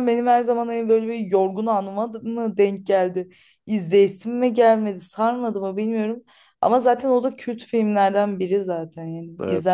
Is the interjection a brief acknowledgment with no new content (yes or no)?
no